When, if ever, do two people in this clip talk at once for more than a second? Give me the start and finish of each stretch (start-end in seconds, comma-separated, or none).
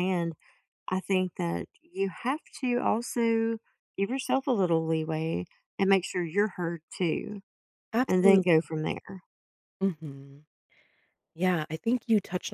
none